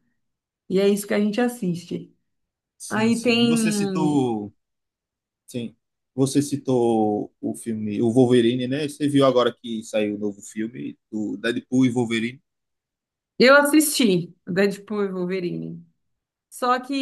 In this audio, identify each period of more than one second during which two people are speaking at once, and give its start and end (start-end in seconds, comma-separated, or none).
2.9-4.2